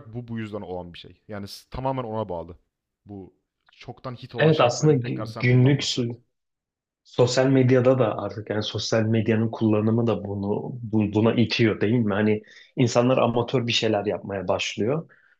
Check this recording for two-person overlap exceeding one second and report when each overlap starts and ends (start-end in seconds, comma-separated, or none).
4.4-6.1